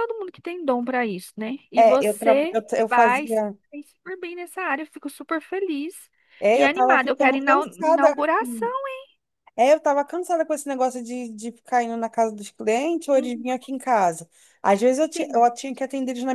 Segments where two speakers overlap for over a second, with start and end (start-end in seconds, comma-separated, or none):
1.8-3.6, 6.5-8.1